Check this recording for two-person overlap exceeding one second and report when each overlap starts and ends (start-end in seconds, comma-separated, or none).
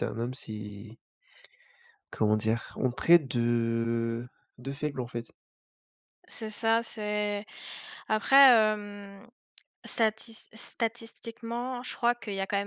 none